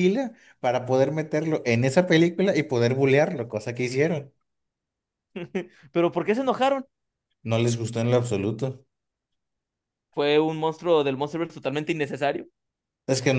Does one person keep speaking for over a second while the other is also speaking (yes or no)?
no